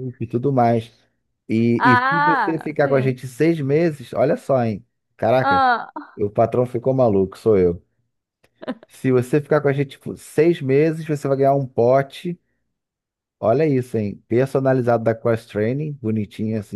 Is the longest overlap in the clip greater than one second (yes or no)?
yes